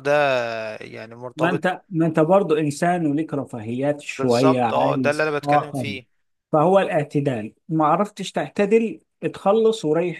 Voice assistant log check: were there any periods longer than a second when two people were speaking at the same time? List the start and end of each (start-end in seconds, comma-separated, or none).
4.2-6.0